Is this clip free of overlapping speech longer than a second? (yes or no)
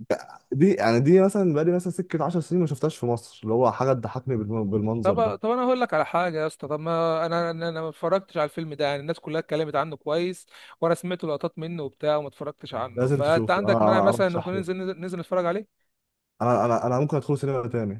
no